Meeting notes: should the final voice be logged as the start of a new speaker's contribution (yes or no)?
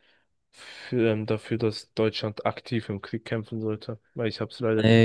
yes